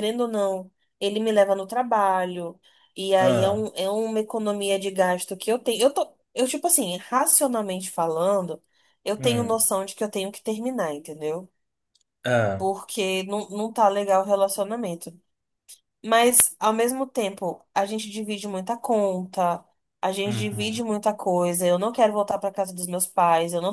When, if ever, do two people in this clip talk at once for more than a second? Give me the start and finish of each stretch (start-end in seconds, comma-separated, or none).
none